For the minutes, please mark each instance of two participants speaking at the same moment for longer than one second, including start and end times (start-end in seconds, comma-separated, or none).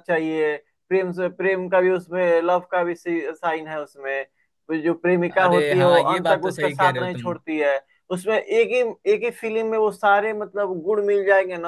5.4-7.3